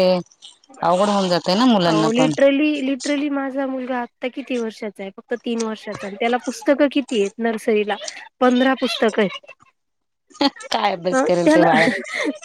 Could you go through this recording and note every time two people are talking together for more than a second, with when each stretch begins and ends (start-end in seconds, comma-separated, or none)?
none